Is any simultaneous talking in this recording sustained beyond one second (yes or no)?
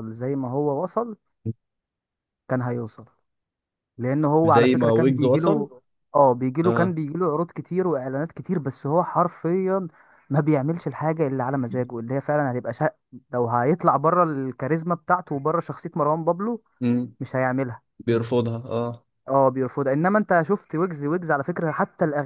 yes